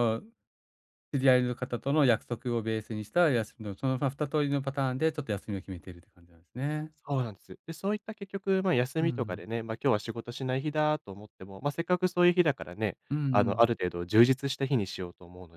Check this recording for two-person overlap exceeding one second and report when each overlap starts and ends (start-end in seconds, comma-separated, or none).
none